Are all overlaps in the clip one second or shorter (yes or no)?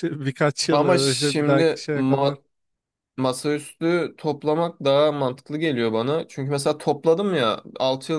no